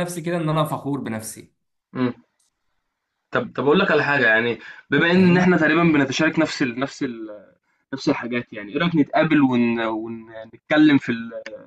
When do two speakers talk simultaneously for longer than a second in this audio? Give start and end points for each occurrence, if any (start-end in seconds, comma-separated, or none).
none